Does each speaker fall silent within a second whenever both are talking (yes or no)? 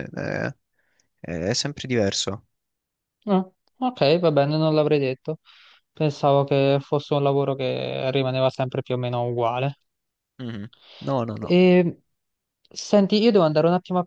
yes